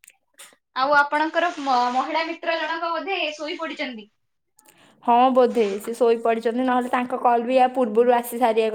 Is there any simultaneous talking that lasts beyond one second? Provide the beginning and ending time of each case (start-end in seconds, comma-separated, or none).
none